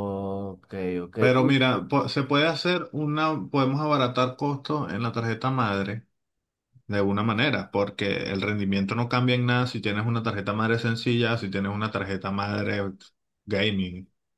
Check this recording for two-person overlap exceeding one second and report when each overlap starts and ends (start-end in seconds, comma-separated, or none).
none